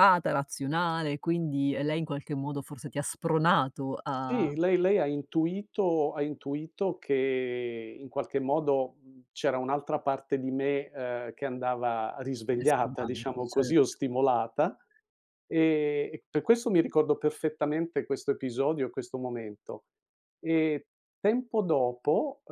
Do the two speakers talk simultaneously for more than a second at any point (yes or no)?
yes